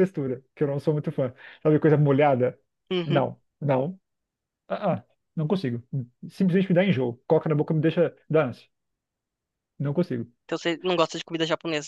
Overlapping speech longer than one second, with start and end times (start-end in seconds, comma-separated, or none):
none